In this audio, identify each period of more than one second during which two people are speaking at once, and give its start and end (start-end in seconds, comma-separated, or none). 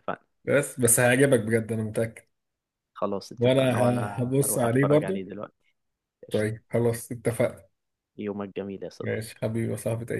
3.4-5.2